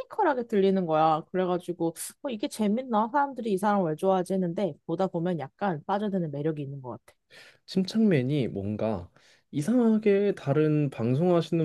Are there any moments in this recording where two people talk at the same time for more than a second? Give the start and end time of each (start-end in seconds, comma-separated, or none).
none